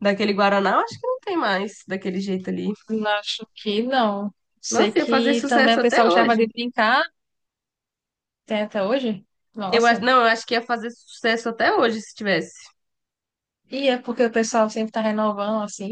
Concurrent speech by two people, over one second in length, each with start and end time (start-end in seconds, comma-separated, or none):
4.7-6.5